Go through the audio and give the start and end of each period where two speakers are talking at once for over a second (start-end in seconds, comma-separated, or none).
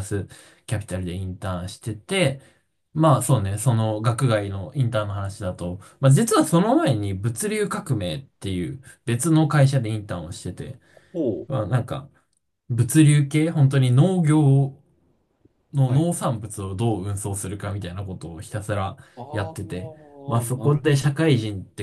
19.2-20.9